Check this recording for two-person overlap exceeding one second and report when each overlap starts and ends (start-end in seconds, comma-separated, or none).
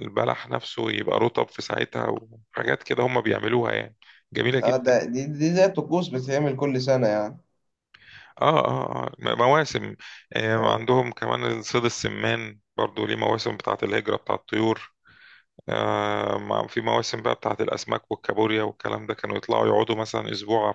none